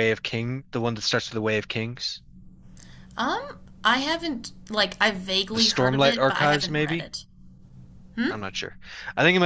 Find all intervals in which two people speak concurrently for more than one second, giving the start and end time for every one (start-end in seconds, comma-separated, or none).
5.5-7.1